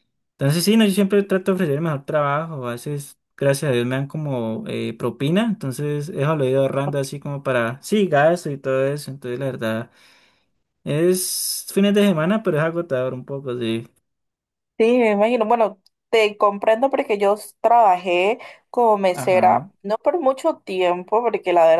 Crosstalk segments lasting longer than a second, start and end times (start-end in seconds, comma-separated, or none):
none